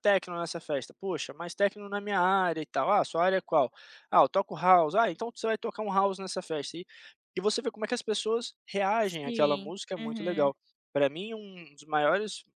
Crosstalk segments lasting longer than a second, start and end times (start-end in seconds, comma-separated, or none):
9.0-10.5